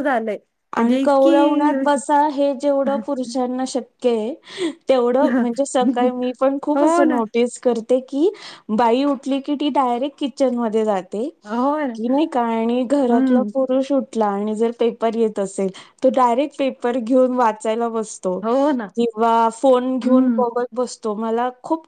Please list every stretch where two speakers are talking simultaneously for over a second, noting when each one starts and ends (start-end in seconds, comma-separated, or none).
0.8-2.0